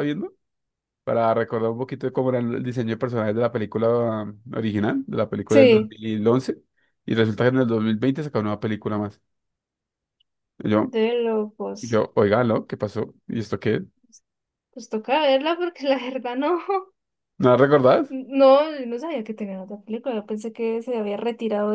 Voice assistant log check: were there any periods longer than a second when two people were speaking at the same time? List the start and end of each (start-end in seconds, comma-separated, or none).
none